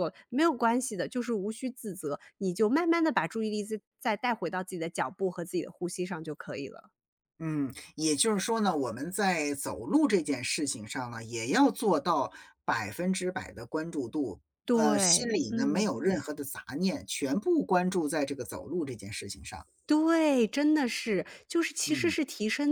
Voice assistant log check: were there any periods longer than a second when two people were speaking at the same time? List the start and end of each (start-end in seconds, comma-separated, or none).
14.6-15.9